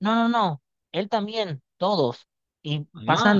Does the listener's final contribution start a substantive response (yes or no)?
no